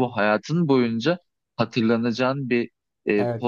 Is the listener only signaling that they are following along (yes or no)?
yes